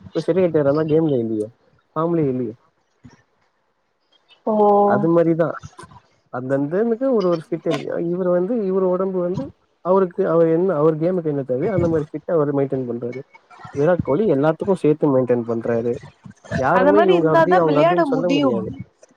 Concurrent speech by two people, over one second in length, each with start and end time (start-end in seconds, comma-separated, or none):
16.8-18.6